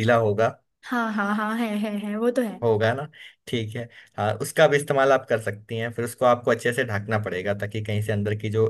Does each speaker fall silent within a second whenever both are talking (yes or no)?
yes